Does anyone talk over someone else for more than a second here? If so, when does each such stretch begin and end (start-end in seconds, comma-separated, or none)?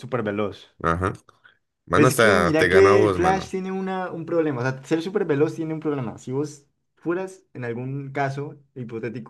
1.9-3.5